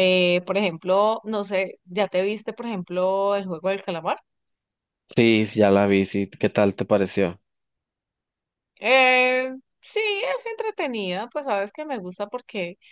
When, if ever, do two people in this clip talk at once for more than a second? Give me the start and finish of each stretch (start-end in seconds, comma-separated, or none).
none